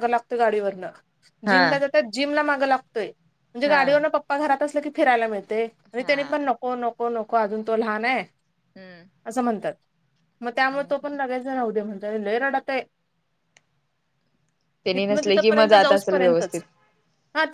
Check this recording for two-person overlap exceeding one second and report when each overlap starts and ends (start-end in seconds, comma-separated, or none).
14.9-16.6